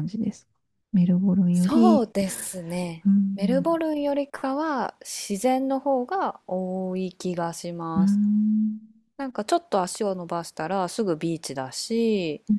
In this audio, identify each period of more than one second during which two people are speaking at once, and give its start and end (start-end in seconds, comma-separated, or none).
none